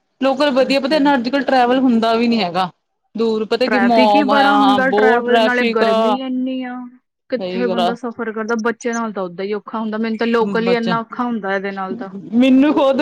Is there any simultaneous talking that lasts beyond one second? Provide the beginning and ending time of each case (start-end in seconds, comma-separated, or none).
3.7-6.2